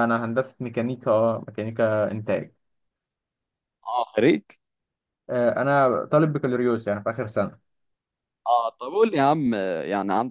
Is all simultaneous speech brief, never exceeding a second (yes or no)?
yes